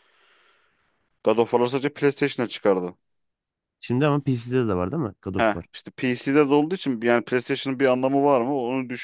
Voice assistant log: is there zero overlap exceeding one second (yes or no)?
yes